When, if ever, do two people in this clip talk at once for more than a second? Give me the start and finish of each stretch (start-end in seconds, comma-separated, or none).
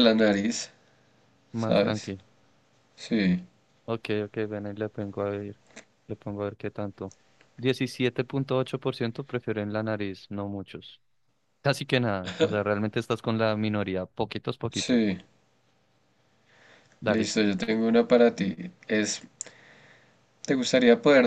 none